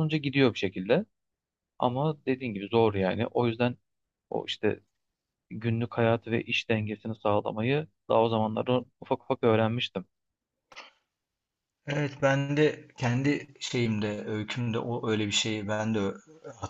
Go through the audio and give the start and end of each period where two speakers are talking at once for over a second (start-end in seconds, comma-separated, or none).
none